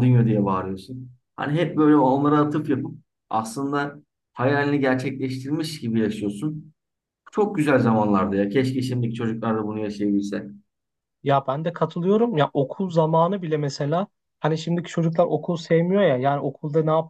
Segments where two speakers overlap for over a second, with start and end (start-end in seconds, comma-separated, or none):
none